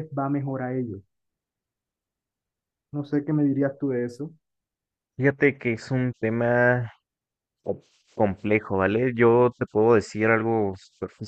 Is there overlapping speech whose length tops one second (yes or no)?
no